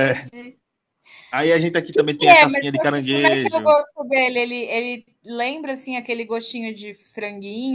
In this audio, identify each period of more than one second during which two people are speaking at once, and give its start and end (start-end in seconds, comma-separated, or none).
1.9-3.8